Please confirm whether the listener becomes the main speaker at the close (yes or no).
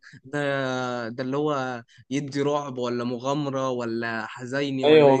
yes